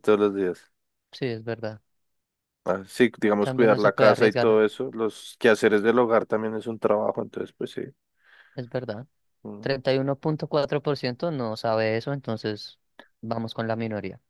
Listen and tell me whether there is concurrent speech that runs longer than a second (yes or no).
yes